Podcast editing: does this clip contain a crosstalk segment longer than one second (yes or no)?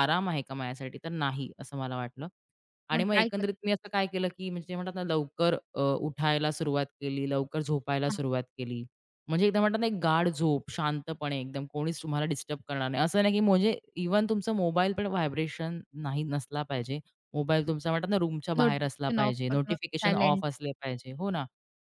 yes